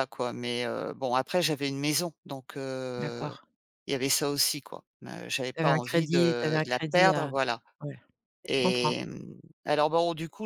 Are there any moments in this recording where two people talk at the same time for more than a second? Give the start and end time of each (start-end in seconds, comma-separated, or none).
5.5-7.3